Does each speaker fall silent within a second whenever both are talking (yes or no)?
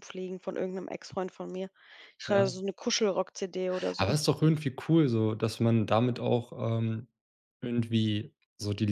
yes